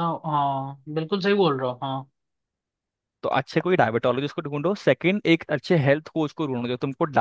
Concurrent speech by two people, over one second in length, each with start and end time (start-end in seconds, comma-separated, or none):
none